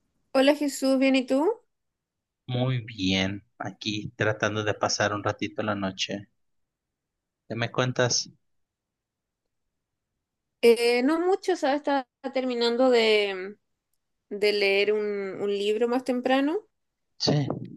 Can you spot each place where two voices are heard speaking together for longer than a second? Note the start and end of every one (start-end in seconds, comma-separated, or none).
none